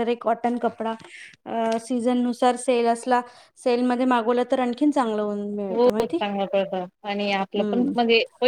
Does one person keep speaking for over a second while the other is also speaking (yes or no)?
no